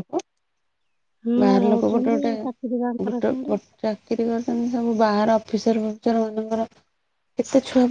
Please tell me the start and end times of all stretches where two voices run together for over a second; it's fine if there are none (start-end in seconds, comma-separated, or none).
1.4-3.5